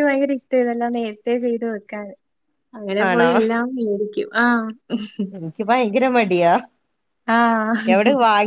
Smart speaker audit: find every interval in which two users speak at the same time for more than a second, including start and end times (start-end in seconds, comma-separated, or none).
none